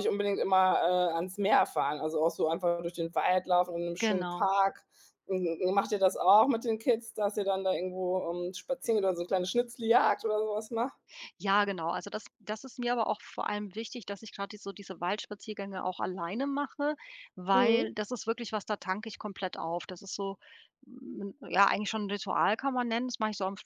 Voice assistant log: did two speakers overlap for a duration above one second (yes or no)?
no